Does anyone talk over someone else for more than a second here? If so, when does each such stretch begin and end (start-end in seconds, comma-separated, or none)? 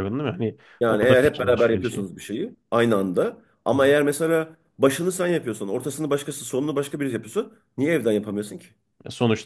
0.8-2.1